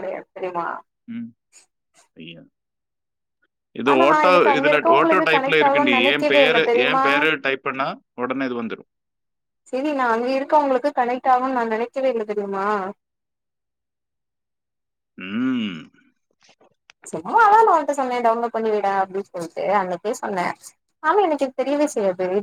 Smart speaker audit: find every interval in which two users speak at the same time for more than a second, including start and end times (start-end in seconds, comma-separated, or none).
4.6-7.0